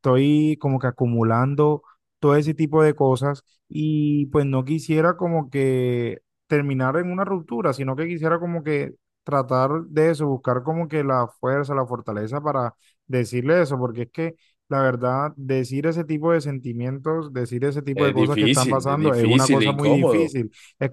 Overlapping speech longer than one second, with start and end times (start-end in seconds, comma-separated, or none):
17.9-20.4